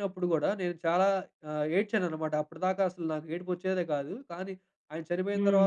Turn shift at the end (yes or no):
no